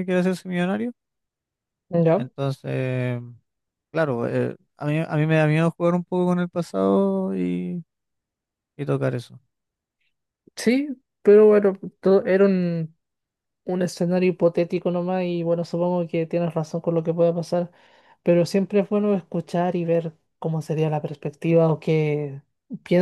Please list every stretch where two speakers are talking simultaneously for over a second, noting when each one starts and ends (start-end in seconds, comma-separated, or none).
none